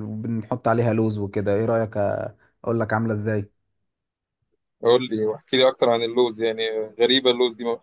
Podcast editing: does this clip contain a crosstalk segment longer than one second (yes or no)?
no